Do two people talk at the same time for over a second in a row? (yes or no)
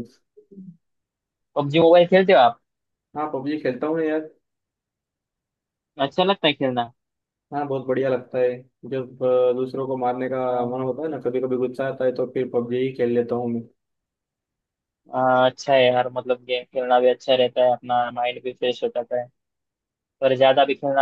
no